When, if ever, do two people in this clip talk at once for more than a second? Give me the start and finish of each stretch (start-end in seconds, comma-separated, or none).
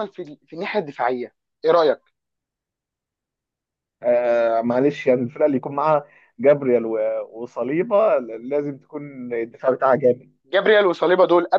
none